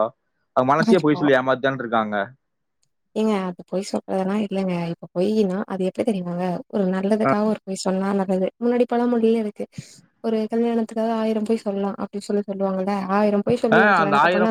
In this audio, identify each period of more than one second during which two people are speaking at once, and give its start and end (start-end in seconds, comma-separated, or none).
none